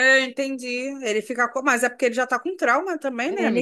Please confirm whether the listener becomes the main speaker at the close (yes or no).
yes